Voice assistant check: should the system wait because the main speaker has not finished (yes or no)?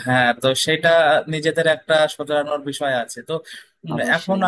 yes